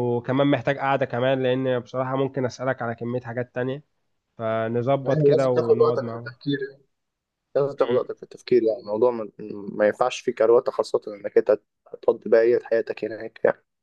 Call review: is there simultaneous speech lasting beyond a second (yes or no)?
yes